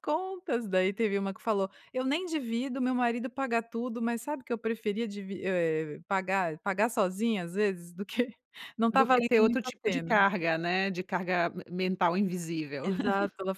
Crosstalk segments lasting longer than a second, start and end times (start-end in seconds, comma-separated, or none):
8.9-10.2